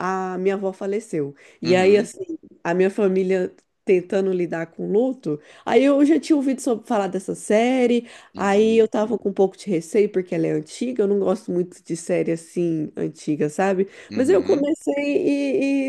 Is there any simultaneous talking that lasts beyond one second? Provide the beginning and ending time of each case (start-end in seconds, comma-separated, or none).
none